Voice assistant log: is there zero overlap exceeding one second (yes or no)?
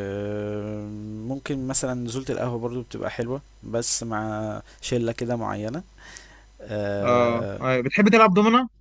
yes